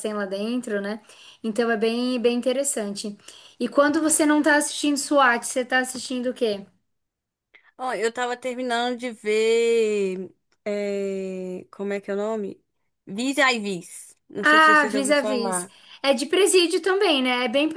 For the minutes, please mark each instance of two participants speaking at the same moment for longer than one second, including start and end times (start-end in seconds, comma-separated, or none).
14.4-15.7